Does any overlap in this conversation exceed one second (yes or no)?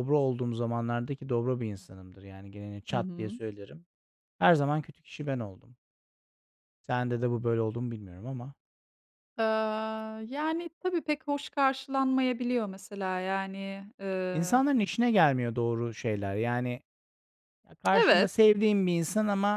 no